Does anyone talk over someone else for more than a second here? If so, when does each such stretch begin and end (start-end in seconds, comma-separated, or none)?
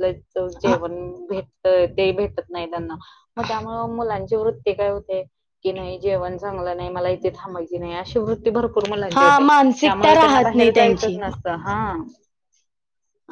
9.2-11.2